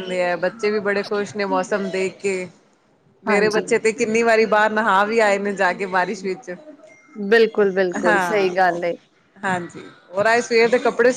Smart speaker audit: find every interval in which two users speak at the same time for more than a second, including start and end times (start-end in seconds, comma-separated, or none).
none